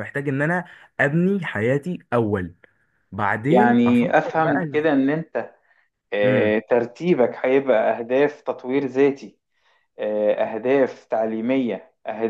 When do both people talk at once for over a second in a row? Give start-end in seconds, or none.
3.5-5.0